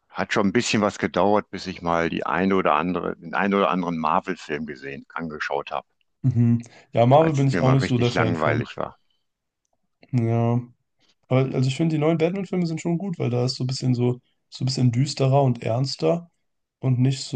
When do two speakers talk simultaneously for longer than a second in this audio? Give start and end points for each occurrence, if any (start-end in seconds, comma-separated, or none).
7.2-8.6